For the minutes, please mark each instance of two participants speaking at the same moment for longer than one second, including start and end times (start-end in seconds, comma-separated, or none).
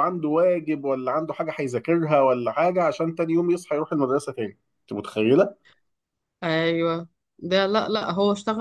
none